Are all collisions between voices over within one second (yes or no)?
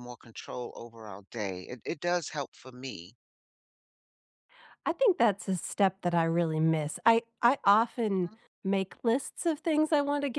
yes